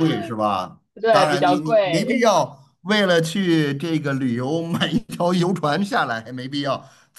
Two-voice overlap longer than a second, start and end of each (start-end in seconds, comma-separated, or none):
0.9-2.3